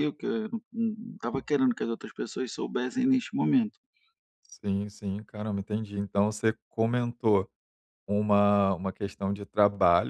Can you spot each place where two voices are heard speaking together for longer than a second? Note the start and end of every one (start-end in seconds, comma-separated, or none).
none